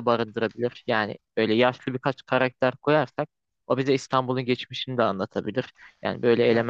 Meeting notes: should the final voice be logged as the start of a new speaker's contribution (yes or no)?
no